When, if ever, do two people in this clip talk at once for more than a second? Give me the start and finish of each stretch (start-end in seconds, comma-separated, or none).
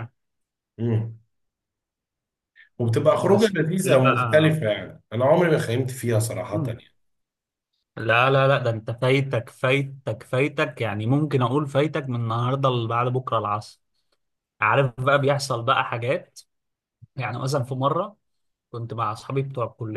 3.2-4.6